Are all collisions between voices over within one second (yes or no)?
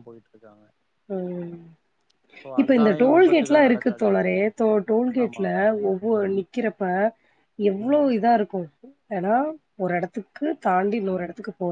no